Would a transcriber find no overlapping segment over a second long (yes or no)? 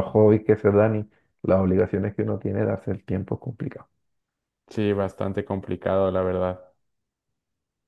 yes